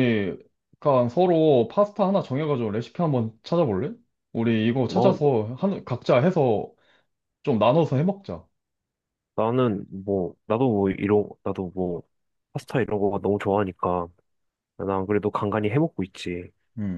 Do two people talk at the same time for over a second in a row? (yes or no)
no